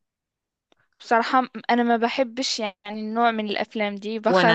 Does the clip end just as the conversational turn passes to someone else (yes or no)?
yes